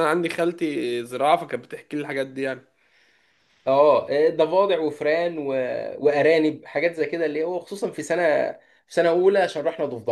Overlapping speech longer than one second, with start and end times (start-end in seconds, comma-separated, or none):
none